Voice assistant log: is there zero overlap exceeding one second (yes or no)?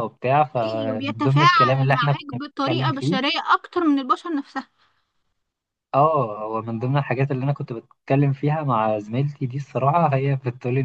no